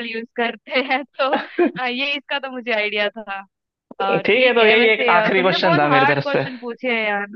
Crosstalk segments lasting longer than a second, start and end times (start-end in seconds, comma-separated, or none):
4.2-6.4